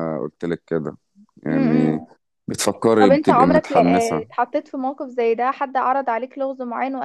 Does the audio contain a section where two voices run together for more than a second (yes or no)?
yes